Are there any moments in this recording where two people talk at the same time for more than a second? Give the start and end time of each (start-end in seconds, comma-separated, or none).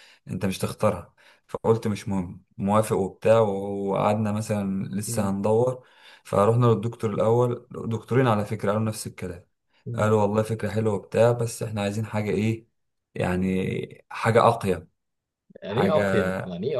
none